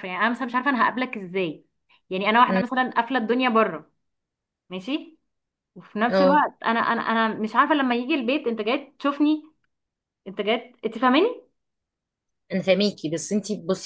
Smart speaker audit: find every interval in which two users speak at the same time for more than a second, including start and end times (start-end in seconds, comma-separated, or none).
none